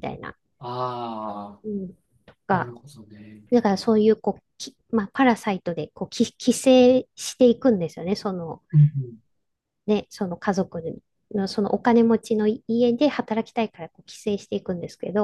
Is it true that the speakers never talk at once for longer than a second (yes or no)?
yes